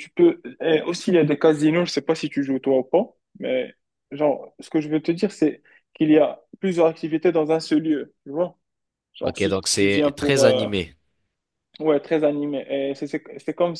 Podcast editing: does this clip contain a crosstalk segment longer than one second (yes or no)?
yes